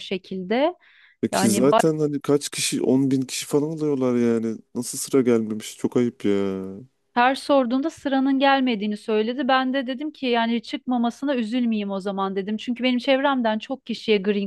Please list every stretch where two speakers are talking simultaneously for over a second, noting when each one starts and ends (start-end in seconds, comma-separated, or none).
none